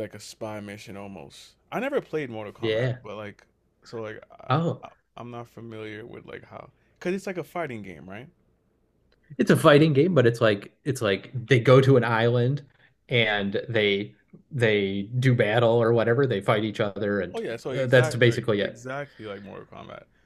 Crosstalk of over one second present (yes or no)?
yes